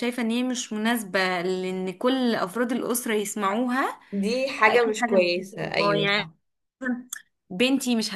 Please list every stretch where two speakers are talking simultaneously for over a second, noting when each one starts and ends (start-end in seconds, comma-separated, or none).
4.6-6.3